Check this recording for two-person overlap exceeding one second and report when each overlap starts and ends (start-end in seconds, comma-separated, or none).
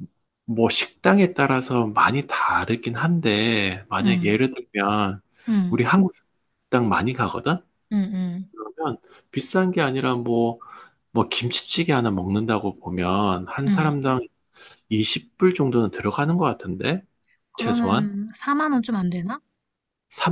none